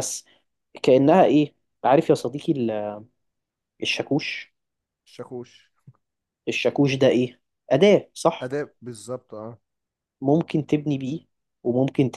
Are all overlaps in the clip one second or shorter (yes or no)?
yes